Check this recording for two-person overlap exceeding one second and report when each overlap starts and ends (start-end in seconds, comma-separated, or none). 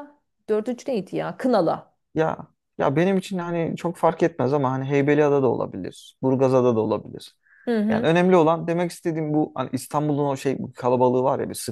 none